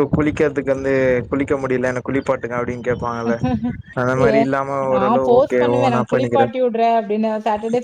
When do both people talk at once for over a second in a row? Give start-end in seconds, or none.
4.9-6.5